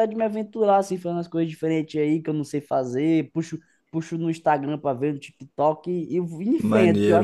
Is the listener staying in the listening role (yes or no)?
no